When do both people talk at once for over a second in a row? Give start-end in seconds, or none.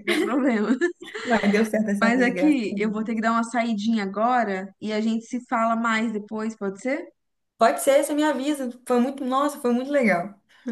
2.0-3.3